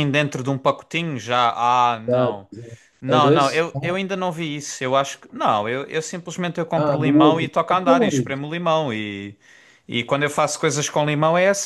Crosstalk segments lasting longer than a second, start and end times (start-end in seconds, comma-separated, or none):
6.7-8.4